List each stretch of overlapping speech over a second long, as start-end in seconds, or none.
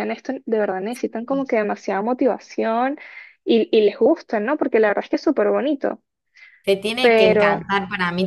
none